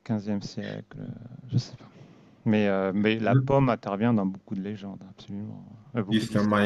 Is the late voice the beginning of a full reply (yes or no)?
yes